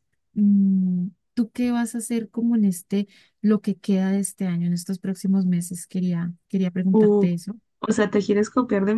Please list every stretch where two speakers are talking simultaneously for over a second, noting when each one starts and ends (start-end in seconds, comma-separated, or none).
none